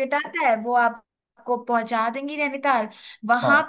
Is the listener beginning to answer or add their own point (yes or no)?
no